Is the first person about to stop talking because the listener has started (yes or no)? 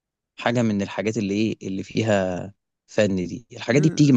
no